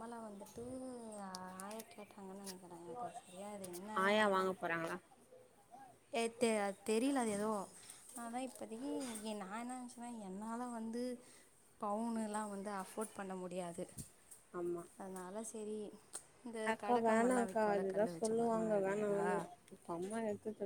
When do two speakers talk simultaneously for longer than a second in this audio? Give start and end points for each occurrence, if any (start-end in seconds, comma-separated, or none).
16.7-19.3